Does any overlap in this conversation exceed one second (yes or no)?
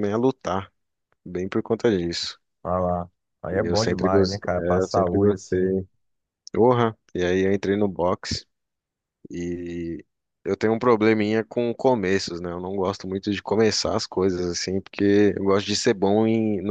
yes